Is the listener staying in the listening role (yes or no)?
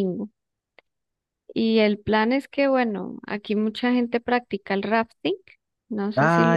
no